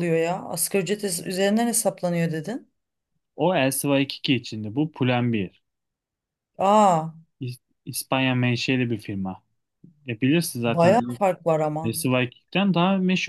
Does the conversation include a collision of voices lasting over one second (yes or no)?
no